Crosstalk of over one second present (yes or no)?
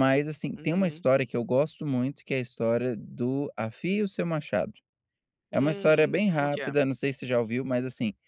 yes